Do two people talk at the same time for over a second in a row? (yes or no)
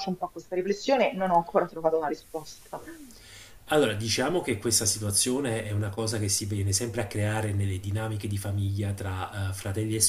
no